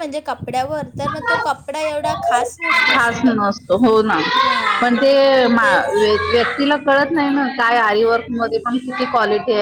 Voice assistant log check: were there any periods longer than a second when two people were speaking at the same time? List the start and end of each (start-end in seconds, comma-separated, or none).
none